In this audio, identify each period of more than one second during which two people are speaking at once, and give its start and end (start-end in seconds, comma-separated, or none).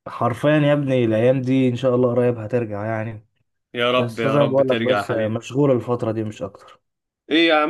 4.0-5.4